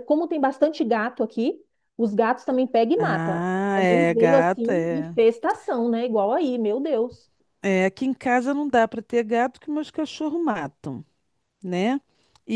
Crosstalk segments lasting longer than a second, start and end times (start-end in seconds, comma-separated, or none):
3.0-5.2